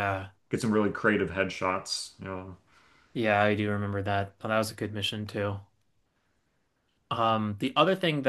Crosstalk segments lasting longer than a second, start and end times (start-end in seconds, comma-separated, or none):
none